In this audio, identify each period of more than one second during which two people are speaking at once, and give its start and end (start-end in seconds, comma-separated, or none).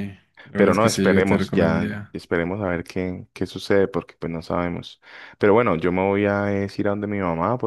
0.6-2.1